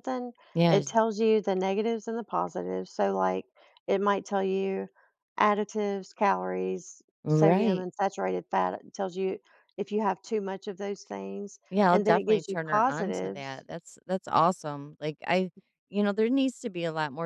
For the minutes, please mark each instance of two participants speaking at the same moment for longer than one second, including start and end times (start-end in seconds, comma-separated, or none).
11.7-13.7